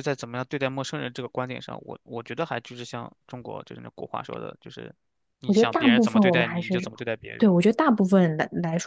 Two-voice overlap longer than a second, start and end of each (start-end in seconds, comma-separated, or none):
5.5-6.8